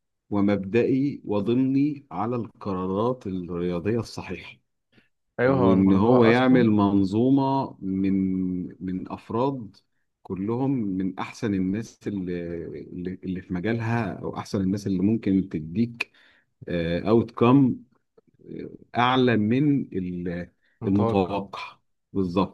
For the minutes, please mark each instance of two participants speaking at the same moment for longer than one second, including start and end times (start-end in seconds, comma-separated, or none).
5.5-6.7